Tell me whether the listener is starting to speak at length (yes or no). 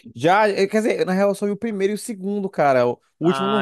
yes